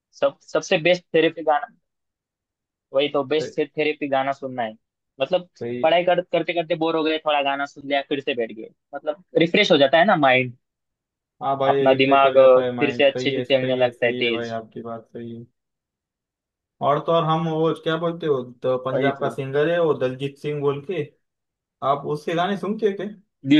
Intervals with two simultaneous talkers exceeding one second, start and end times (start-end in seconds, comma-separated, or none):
11.7-14.6